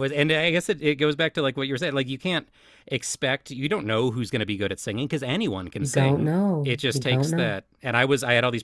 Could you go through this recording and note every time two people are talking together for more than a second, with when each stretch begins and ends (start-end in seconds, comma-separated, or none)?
5.8-7.5